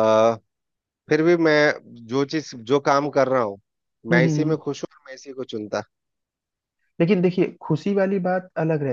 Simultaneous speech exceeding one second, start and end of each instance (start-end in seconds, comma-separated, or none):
none